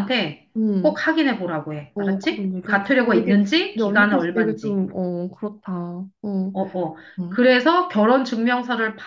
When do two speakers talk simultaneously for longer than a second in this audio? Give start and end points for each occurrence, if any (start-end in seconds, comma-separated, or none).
1.9-4.8